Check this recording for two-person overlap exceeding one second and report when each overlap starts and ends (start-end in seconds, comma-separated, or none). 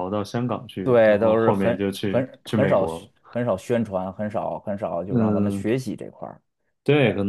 0.8-3.1